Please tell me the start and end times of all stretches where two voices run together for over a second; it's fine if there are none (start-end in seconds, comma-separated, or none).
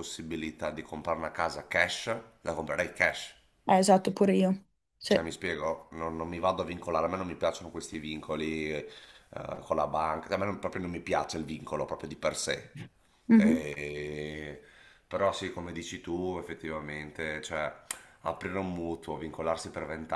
none